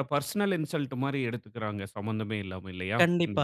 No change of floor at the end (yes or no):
no